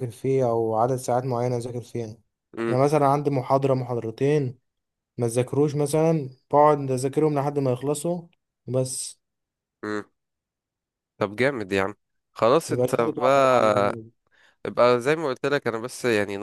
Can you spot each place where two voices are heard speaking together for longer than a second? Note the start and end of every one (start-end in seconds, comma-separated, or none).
12.7-14.0